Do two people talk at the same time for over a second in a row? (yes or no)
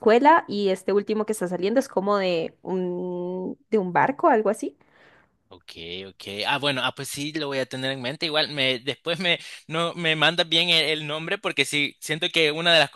no